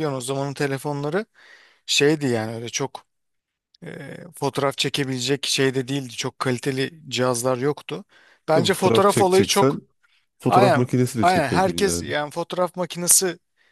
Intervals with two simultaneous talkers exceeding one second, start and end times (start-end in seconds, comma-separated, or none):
8.5-9.8, 10.5-12.1